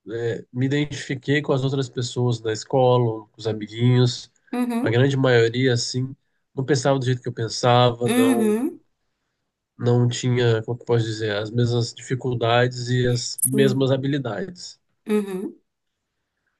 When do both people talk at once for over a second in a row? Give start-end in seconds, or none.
none